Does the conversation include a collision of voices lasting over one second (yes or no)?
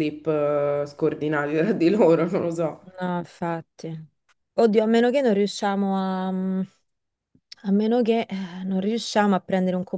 no